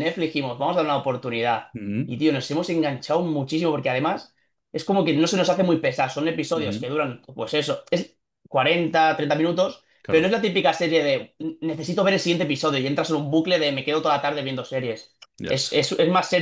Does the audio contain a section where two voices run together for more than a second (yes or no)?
no